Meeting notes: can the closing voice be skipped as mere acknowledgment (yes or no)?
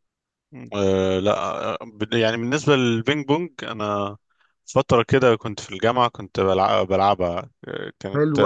no